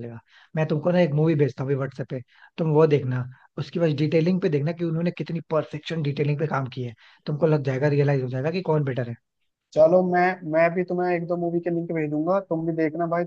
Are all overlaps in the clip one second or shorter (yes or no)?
yes